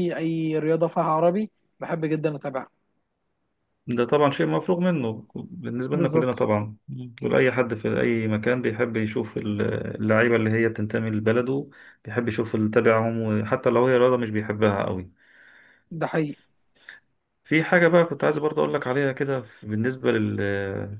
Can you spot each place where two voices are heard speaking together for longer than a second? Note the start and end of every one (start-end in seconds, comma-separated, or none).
none